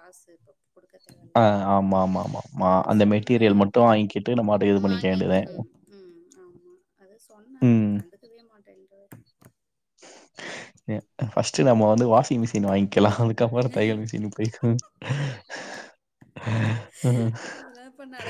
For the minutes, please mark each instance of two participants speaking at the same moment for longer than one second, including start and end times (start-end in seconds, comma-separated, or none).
none